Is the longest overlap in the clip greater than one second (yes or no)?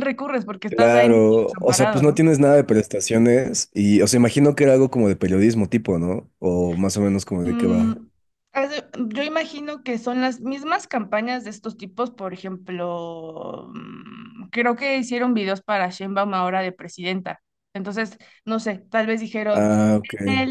yes